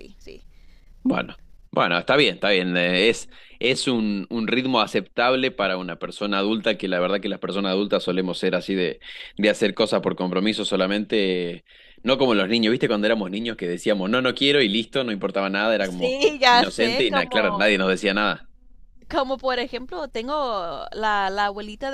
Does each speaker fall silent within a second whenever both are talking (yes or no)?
no